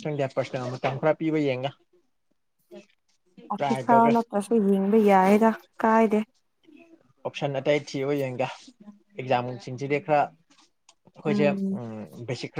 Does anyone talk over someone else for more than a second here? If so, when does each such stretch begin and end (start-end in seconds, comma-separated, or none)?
none